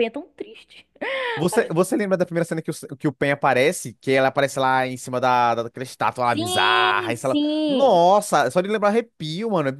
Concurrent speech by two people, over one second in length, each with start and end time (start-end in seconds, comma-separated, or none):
6.2-8.0